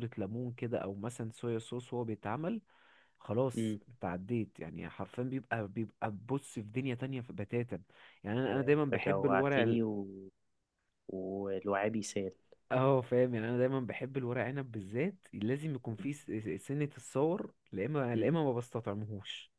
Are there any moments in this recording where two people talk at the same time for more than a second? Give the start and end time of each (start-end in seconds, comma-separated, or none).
8.5-9.8